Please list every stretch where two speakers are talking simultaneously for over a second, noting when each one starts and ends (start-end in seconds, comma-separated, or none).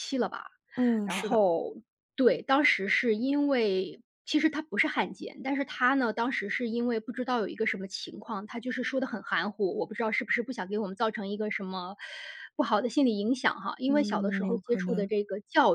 13.9-15.1